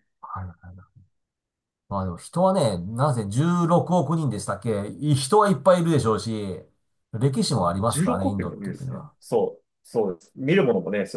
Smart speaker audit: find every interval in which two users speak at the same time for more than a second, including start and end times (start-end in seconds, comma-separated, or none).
7.5-9.1